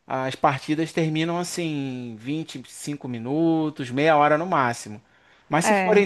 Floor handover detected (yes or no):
no